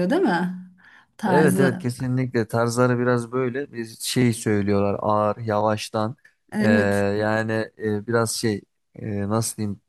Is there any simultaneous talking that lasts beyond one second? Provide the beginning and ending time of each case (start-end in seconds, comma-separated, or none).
none